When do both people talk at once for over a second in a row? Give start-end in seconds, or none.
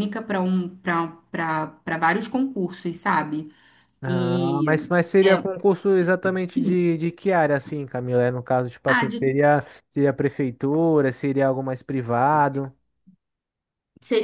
4.0-5.4